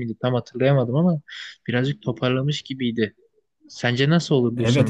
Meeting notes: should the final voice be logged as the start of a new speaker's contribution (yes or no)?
yes